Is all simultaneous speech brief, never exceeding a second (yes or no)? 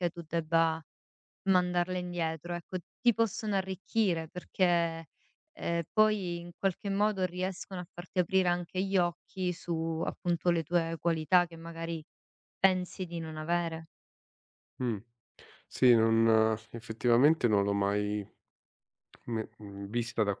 yes